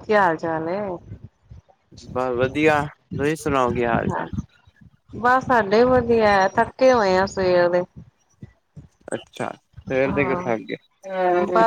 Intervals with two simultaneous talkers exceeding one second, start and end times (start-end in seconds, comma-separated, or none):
none